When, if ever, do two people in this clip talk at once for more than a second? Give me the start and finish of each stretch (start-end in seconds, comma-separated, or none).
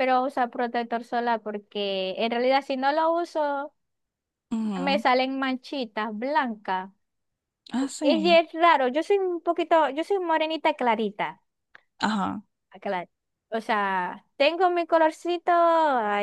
none